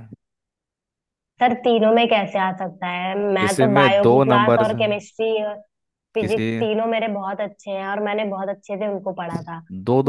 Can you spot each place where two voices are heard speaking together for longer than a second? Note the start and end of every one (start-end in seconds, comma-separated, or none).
3.4-5.0